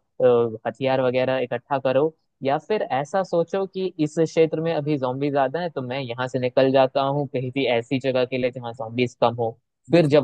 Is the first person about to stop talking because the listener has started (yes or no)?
no